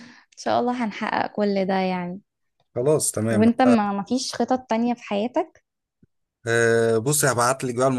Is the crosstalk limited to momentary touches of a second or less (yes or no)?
yes